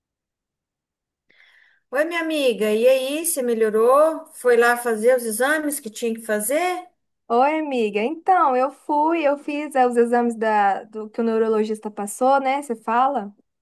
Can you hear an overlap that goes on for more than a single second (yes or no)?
no